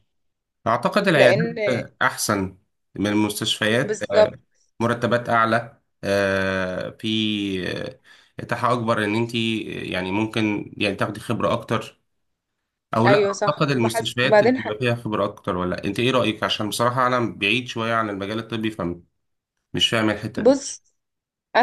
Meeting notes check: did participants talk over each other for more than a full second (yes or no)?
yes